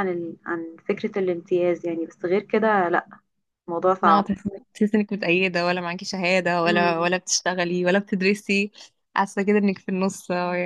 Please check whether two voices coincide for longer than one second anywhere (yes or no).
no